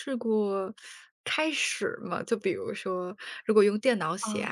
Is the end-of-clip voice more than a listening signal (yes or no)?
no